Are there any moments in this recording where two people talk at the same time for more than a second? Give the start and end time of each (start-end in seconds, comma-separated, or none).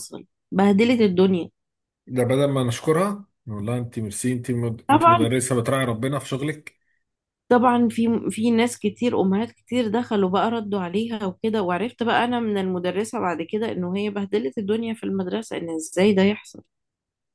none